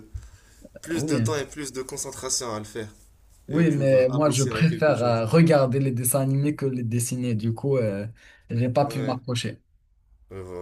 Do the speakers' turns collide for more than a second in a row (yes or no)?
yes